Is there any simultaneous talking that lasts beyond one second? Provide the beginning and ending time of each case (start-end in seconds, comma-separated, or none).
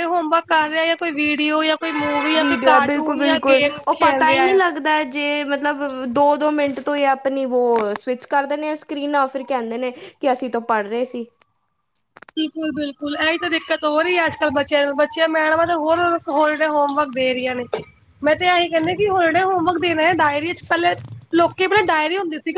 2.4-4.6